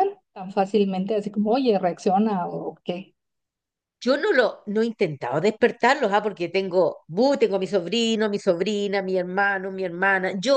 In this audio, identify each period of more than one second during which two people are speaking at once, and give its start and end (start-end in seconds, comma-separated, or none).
none